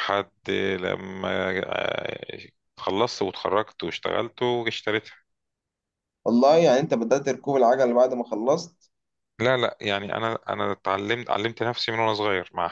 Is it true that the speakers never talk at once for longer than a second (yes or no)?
yes